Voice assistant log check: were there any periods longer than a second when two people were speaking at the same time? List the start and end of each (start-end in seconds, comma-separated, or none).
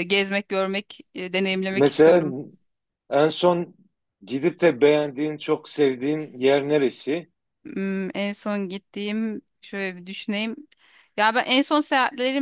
none